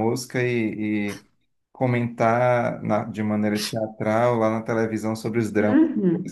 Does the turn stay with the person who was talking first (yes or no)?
no